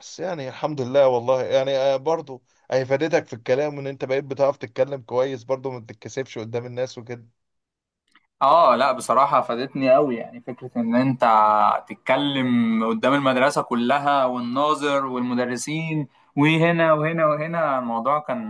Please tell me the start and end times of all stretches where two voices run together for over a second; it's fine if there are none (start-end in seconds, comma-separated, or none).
none